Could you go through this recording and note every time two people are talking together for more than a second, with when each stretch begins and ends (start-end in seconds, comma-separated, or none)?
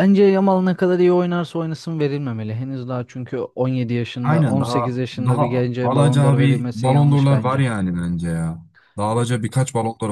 4.2-7.6